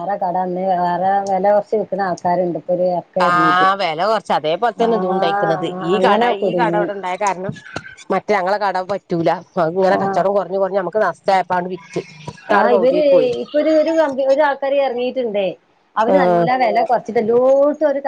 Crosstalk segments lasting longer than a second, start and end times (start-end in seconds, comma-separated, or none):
4.9-6.9